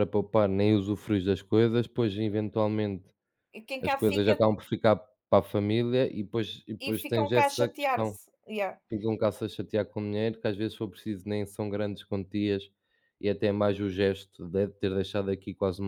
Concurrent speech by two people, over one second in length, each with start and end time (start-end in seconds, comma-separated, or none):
6.8-8.2